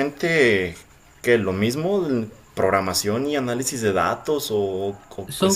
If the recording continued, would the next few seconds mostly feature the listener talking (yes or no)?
yes